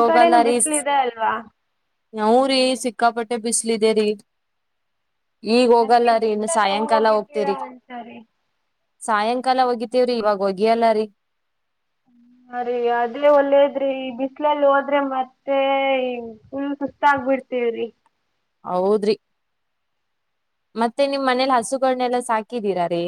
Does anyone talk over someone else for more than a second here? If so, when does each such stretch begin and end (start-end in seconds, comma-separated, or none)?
5.8-7.5